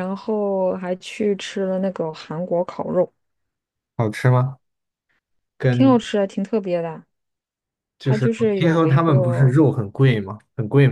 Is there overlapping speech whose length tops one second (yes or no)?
yes